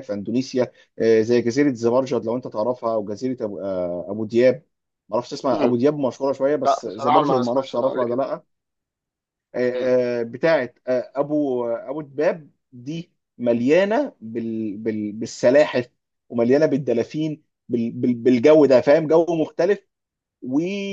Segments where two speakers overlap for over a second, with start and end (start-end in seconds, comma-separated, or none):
6.7-8.2